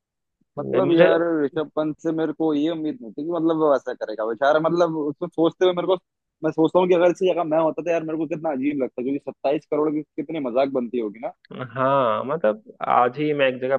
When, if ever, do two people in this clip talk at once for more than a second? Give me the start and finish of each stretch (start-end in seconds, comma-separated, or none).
none